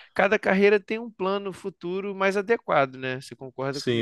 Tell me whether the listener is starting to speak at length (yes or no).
yes